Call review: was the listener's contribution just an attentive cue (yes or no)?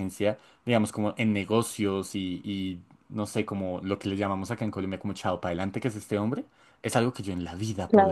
yes